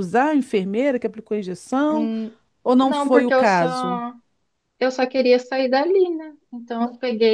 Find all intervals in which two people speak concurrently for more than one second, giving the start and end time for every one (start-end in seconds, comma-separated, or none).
2.8-4.0